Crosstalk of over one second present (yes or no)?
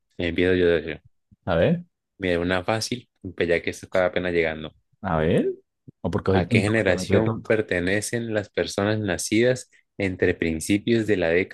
yes